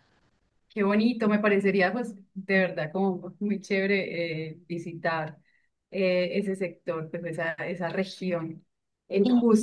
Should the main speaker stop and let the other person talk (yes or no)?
no